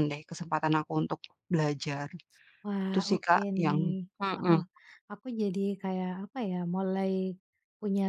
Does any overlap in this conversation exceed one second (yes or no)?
yes